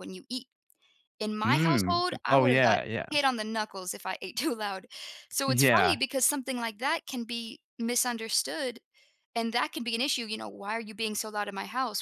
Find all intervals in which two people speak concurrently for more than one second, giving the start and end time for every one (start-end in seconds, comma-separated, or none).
1.4-3.1